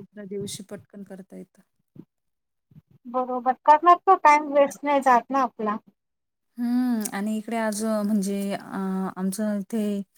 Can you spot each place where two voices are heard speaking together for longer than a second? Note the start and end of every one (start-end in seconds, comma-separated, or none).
none